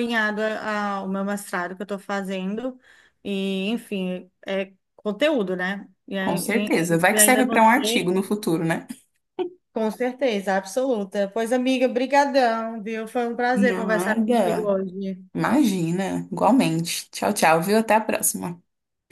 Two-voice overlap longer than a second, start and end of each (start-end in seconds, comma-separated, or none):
6.2-8.1, 13.5-14.7